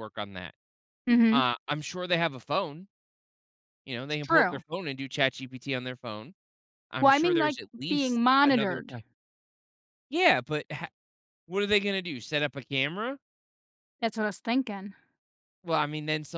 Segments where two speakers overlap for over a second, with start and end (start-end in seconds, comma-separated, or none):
7.0-8.9